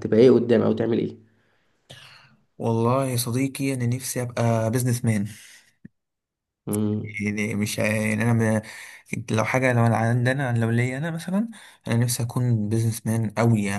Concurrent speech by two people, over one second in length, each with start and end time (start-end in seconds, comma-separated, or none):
none